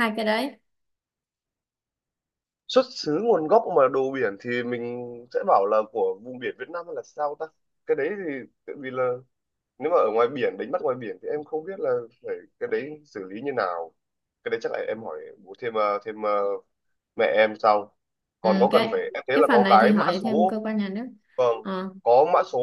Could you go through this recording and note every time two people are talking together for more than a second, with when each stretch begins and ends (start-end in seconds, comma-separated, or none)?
18.4-20.6